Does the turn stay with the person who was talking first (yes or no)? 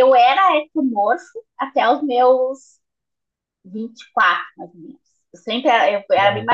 yes